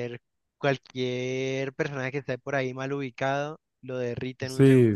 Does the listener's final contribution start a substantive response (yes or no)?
yes